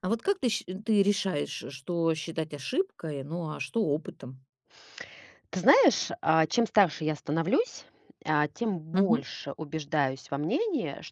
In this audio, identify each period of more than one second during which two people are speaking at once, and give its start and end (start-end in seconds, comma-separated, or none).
none